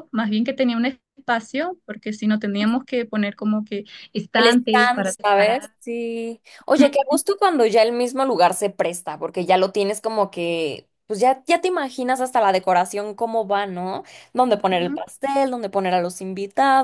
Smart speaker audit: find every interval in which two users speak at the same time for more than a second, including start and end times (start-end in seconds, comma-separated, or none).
4.4-5.7